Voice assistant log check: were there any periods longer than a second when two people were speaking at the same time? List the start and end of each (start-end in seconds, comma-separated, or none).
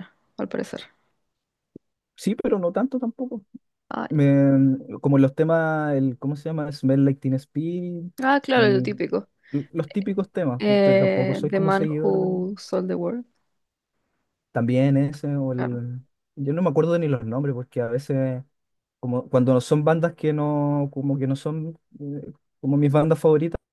10.6-12.4